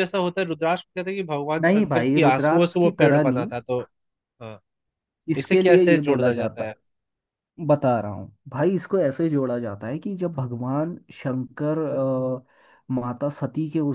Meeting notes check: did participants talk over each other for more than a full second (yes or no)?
yes